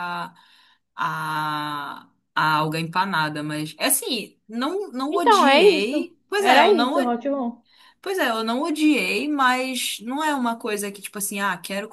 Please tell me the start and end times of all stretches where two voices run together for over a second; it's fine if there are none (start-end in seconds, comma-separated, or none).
5.1-7.1